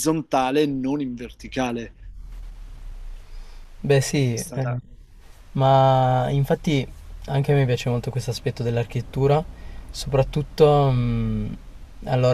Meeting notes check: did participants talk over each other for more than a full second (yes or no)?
no